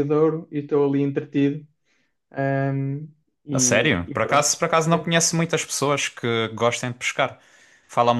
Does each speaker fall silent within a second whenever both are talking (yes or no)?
no